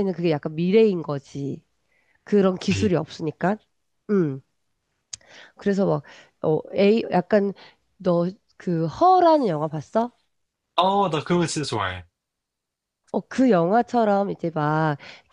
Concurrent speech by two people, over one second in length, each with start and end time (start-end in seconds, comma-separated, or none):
none